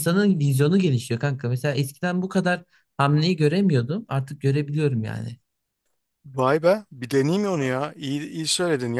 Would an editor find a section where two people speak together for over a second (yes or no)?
no